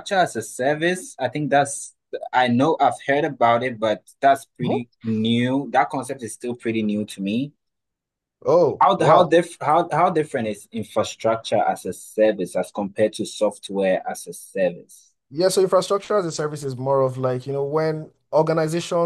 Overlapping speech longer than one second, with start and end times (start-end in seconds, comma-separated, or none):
none